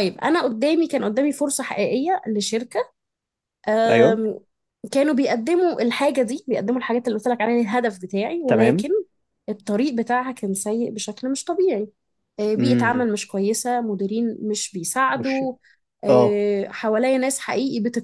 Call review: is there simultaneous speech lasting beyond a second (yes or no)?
no